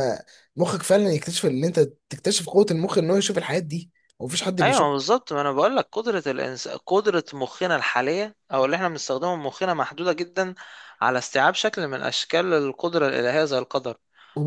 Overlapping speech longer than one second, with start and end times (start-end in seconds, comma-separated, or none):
none